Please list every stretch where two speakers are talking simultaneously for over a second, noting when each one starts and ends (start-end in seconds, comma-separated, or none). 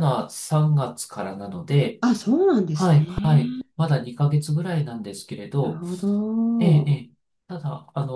none